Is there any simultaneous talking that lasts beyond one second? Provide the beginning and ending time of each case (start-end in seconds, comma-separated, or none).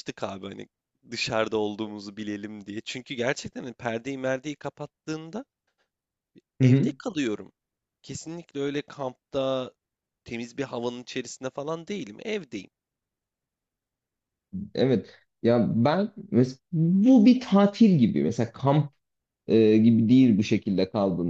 none